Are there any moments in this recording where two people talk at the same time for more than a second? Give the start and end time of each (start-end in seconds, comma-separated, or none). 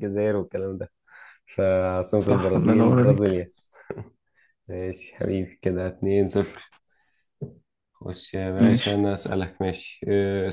2.2-3.4